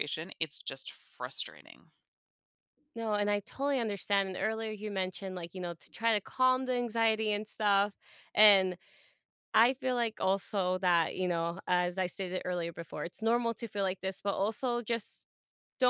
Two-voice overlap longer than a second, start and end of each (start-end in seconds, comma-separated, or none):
none